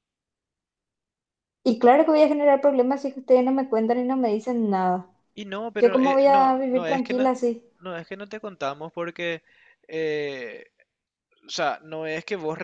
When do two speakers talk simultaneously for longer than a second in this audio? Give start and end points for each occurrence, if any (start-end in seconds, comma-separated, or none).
5.8-7.3